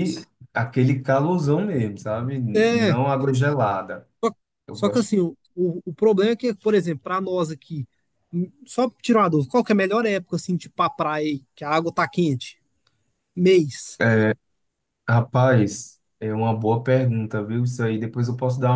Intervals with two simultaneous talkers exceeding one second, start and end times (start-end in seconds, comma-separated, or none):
none